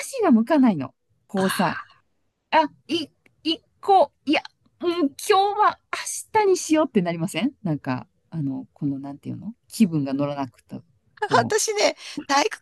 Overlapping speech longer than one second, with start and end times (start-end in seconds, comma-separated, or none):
none